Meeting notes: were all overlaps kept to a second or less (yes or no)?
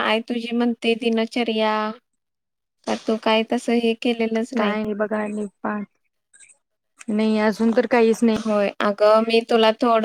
yes